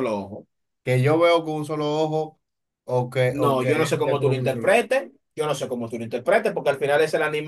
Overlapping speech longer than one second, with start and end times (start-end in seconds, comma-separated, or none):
3.3-4.9